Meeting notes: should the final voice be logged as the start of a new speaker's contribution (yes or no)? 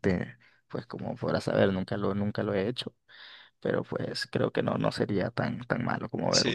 yes